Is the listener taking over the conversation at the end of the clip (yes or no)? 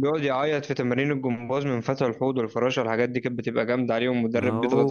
yes